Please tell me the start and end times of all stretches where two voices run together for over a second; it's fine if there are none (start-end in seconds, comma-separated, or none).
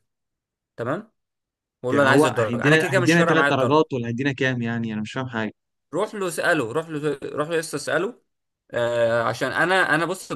1.9-3.9